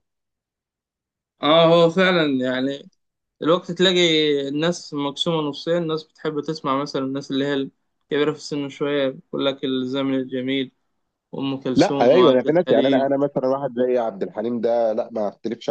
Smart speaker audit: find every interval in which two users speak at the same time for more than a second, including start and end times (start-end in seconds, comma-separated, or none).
11.7-13.1